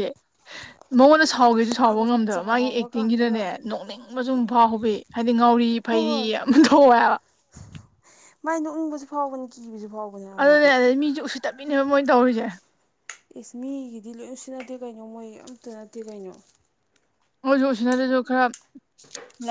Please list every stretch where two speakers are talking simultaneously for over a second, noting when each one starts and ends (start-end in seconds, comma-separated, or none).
1.5-3.4